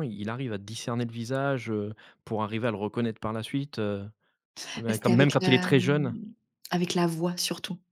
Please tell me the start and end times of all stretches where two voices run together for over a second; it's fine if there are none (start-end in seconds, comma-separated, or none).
4.9-6.2